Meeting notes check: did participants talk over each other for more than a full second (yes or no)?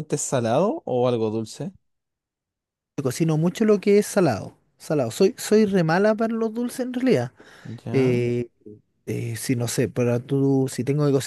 no